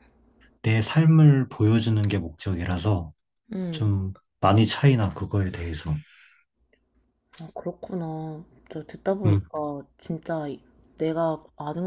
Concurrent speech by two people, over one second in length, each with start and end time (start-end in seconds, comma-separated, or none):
none